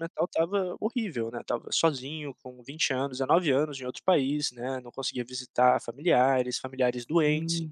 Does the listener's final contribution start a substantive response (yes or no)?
no